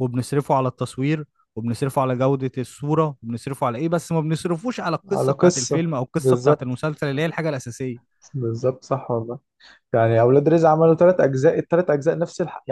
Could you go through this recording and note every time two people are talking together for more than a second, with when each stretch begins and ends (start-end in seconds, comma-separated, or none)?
5.1-6.8